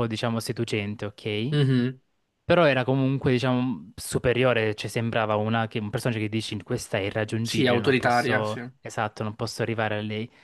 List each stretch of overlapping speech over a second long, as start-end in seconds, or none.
7.4-8.6